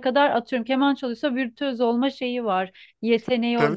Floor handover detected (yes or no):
yes